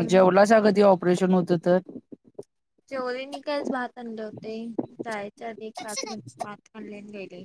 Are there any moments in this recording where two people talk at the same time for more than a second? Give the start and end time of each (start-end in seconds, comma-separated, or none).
none